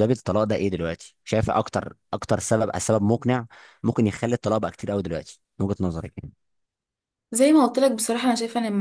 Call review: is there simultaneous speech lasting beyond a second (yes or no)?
no